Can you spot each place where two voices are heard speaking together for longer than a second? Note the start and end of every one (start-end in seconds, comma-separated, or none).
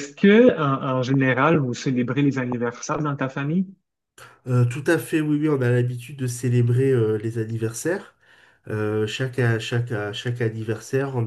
none